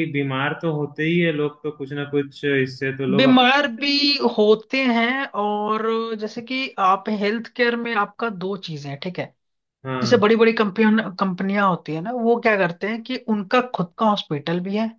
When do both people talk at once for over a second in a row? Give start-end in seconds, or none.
none